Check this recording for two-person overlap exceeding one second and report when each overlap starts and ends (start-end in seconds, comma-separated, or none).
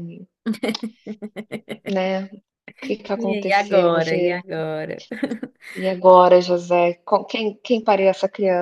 3.2-4.4